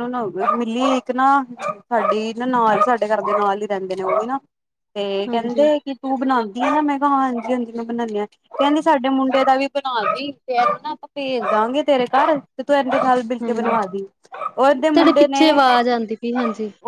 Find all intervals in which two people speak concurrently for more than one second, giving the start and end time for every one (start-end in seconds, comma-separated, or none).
none